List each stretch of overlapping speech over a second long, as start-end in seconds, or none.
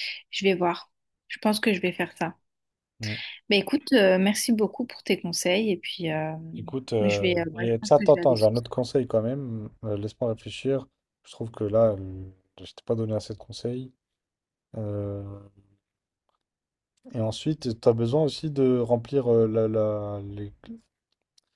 7.0-8.5